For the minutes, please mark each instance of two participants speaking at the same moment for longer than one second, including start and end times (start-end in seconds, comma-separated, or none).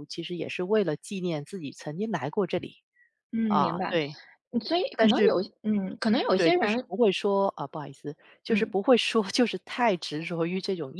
none